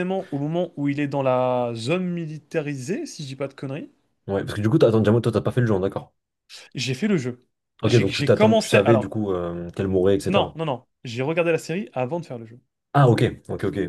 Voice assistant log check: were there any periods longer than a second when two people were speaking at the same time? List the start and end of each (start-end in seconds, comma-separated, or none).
7.8-9.1